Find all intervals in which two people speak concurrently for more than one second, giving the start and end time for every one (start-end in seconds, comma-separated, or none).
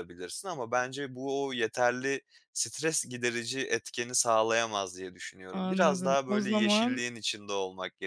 5.5-7.0